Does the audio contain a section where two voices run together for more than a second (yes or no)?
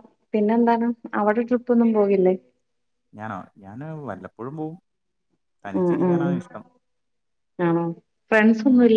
no